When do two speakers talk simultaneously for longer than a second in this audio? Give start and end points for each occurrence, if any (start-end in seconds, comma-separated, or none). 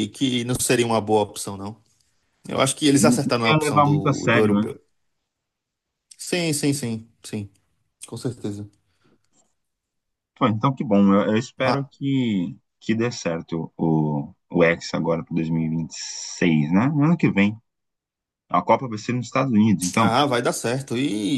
3.0-4.7